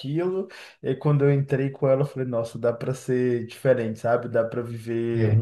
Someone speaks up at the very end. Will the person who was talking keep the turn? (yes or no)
yes